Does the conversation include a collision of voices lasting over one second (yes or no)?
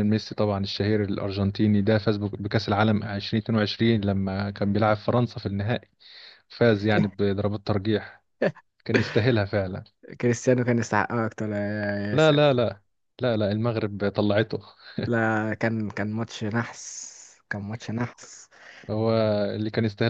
no